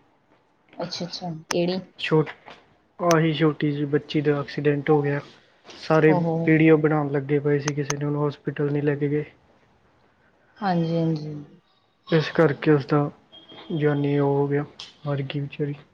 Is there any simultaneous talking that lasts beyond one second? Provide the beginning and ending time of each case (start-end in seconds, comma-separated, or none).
none